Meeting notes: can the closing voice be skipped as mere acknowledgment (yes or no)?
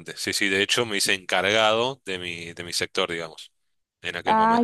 no